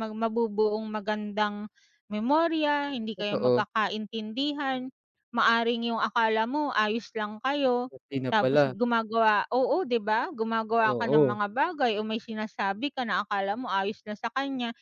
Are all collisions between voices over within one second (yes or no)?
yes